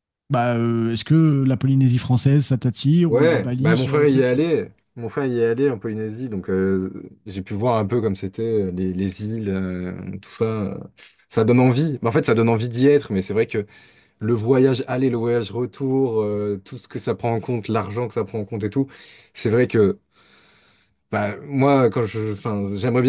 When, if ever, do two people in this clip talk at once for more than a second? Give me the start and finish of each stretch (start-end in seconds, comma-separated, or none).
3.1-4.3